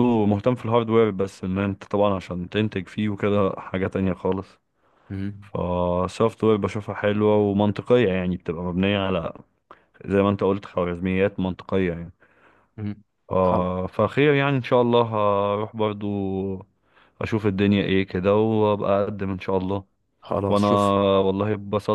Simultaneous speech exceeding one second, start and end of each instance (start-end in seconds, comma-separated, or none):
none